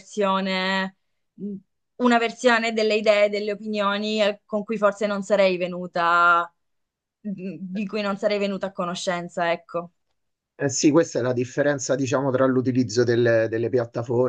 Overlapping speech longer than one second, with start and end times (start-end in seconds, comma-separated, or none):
none